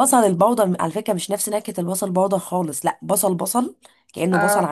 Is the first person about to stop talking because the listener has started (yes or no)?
no